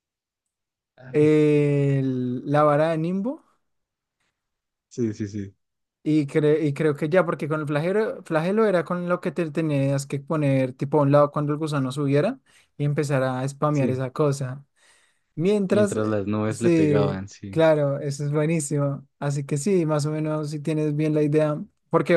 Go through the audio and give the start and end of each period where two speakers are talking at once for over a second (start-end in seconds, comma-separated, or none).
15.7-17.6